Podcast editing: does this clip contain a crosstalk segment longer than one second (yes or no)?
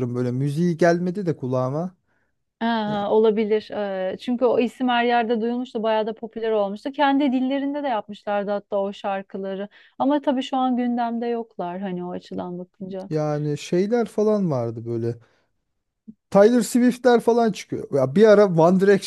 no